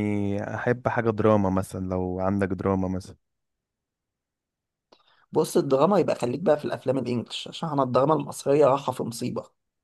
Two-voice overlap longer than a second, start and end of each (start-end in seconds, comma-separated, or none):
none